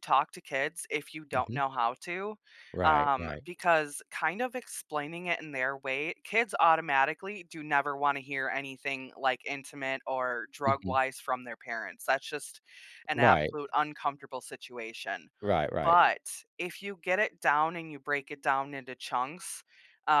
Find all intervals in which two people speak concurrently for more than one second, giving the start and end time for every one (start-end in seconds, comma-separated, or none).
none